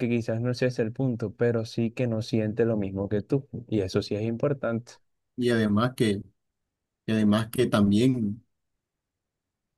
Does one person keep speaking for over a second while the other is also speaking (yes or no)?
no